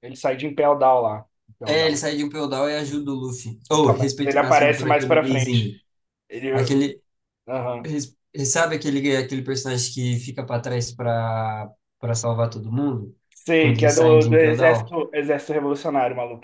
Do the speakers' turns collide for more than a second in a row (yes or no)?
yes